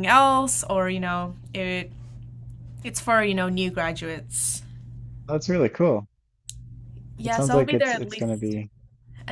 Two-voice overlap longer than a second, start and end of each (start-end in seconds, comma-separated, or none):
7.2-8.6